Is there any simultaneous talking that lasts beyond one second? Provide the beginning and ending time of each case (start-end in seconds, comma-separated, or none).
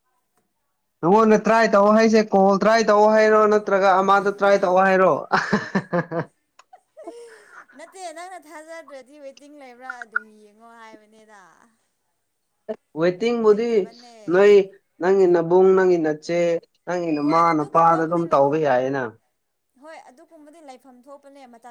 17.2-18.6